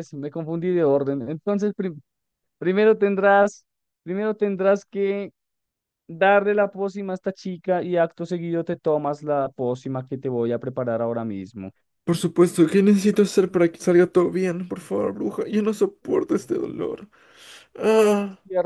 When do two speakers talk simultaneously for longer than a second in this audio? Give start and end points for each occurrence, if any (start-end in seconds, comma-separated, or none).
none